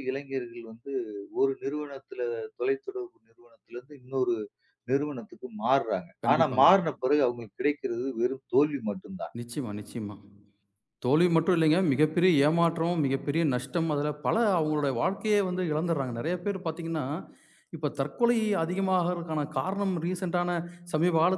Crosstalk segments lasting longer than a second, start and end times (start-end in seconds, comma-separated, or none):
none